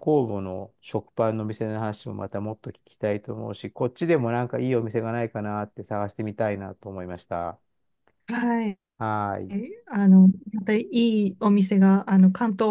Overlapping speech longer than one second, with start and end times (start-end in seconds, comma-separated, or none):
none